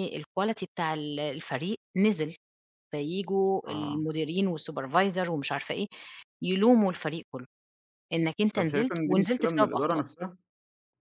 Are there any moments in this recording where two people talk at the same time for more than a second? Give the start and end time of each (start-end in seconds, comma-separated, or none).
8.5-10.0